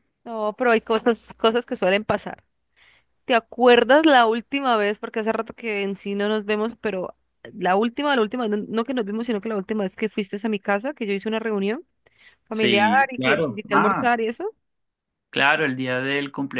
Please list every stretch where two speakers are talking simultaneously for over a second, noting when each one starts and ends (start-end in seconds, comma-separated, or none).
12.5-14.1